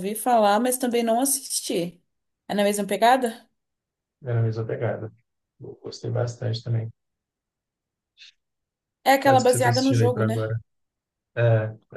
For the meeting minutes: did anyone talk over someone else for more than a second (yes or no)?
yes